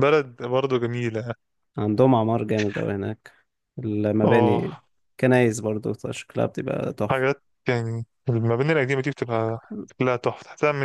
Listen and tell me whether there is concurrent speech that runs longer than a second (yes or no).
no